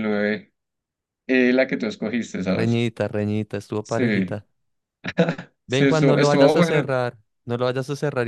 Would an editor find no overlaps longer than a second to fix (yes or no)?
no